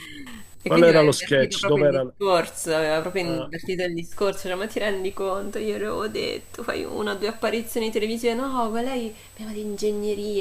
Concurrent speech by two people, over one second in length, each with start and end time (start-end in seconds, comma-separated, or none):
0.7-2.0